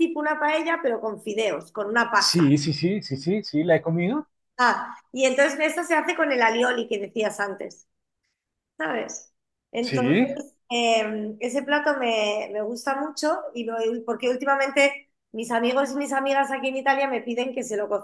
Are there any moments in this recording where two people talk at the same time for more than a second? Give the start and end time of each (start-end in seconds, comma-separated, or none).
none